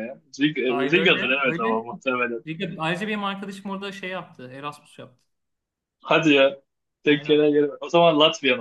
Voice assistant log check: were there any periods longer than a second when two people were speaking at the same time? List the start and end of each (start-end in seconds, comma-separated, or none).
0.7-1.9